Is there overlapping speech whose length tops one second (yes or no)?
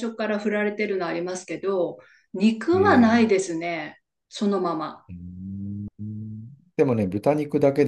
no